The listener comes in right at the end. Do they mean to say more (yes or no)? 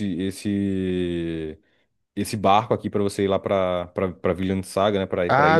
yes